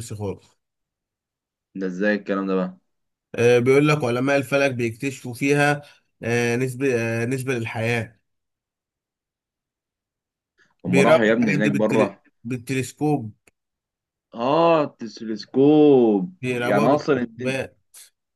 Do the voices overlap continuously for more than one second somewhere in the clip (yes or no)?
yes